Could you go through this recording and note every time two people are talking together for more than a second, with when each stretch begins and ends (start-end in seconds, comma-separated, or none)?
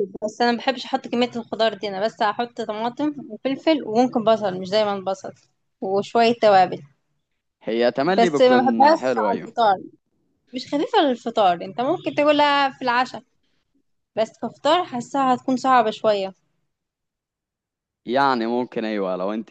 8.2-9.5